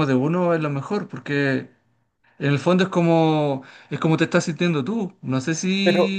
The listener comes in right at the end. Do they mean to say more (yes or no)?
yes